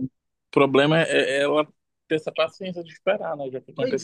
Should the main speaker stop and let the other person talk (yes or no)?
no